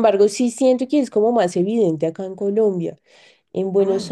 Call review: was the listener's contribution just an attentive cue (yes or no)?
yes